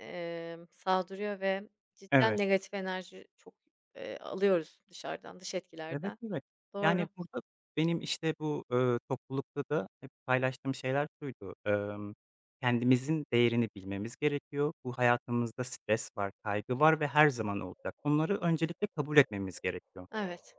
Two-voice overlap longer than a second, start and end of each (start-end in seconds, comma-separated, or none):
none